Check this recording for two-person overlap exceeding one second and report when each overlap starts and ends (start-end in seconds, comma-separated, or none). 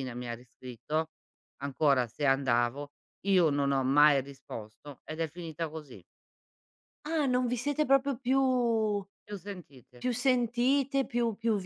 none